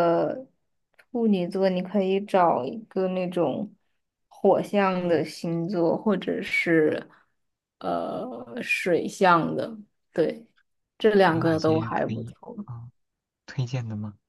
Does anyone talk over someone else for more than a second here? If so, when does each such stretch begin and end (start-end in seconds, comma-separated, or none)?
11.3-12.7